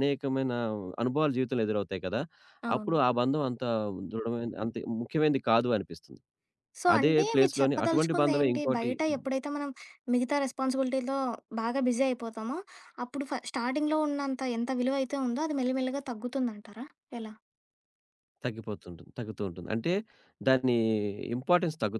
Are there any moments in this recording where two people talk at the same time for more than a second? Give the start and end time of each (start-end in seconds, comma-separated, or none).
7.0-8.9